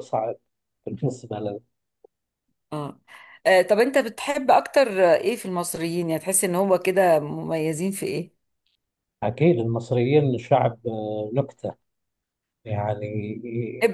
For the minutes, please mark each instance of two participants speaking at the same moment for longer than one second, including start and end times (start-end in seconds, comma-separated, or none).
none